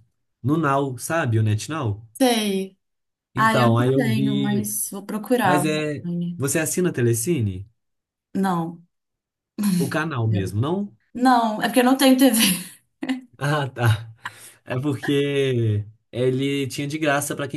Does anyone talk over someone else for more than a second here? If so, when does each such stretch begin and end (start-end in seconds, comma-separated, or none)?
3.4-4.7